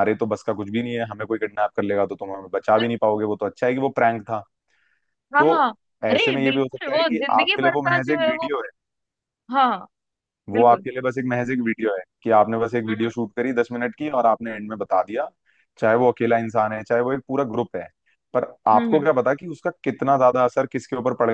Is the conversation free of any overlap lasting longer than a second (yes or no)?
no